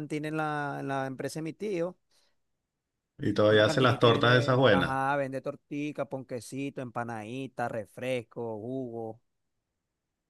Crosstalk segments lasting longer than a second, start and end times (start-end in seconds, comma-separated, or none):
3.5-5.0